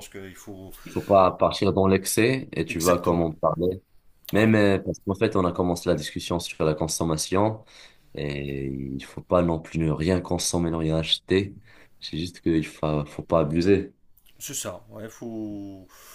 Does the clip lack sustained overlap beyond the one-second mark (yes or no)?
yes